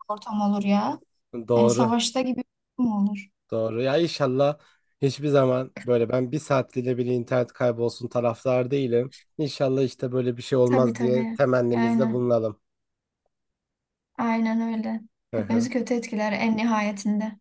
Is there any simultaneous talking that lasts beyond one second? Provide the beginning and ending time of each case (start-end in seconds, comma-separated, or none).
10.6-12.2